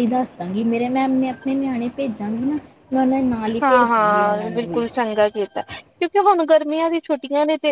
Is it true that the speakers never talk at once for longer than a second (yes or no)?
no